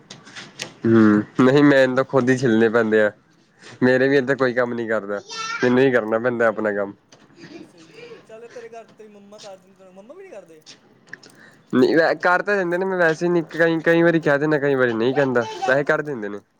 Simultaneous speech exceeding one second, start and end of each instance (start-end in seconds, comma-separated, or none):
none